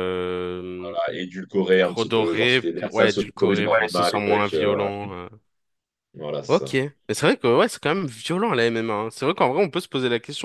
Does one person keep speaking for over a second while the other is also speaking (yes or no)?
yes